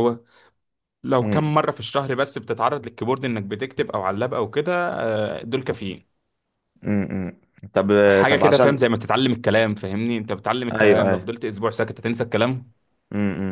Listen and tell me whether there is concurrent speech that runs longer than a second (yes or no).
no